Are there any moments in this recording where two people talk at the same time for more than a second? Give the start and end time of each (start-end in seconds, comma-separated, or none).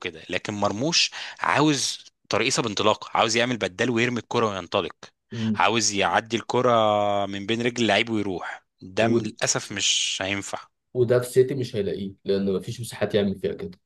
none